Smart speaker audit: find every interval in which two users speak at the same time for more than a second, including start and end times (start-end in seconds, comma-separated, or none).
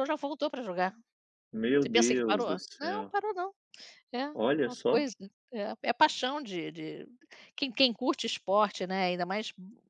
1.8-3.1